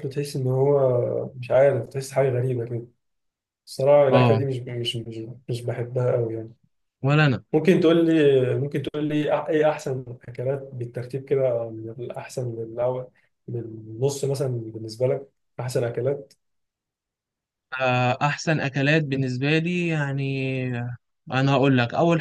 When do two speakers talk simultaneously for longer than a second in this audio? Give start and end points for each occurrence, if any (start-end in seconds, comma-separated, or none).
none